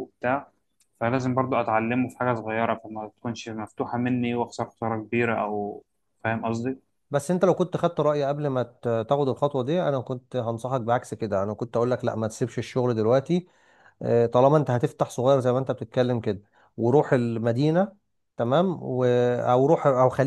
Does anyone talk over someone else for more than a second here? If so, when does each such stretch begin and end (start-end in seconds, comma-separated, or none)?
none